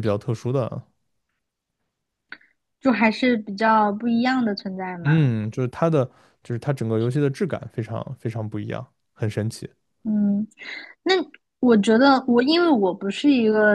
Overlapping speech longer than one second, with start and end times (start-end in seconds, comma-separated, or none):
none